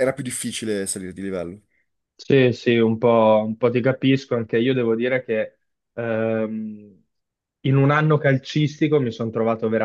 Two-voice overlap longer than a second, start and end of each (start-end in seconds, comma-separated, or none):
none